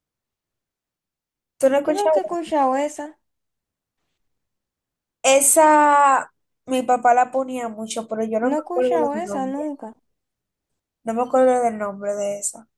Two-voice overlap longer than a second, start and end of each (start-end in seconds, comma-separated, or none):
8.4-9.7